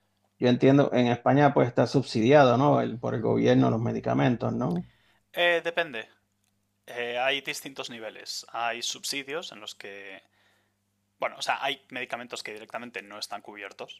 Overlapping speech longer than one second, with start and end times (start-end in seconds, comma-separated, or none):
none